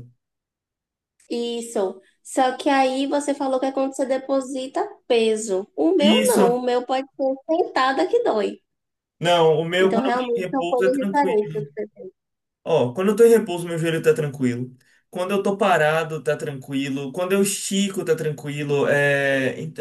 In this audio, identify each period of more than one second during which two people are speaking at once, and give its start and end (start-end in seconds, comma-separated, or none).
9.8-11.5